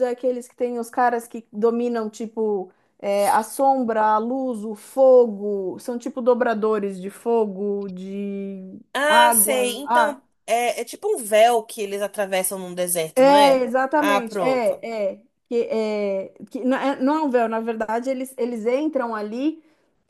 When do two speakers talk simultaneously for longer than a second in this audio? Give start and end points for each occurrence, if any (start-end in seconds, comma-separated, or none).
8.9-10.2, 13.2-14.8